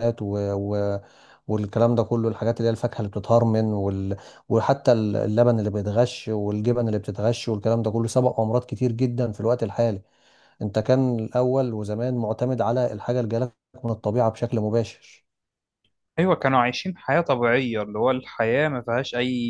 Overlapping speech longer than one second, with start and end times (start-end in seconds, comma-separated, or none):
none